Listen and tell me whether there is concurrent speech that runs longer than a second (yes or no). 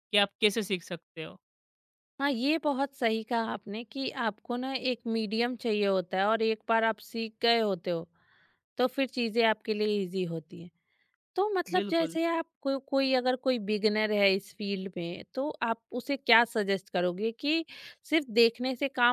no